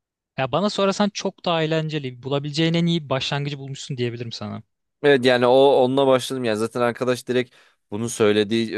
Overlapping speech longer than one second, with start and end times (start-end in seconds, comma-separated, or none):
none